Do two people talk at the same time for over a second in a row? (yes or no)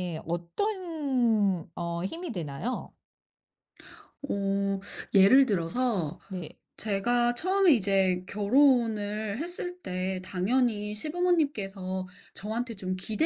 no